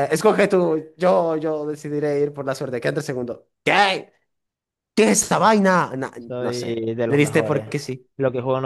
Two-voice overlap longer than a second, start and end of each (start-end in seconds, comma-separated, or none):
6.2-7.7